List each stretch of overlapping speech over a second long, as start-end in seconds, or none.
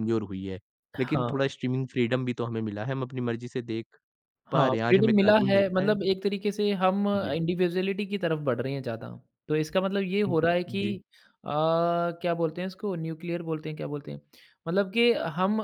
4.5-5.9